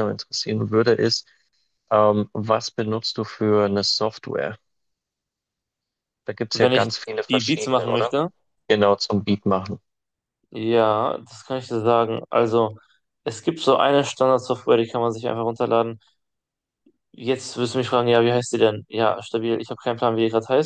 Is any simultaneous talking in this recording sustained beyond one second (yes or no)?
yes